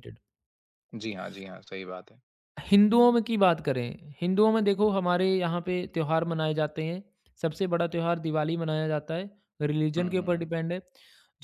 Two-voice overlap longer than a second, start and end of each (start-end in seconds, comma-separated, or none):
none